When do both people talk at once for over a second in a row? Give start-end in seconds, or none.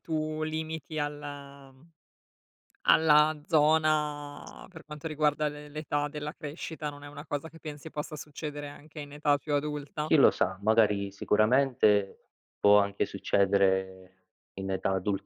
none